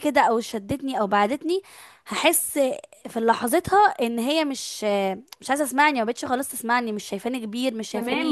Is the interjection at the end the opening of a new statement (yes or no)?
yes